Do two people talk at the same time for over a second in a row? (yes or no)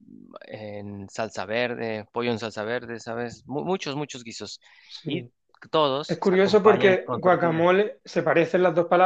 yes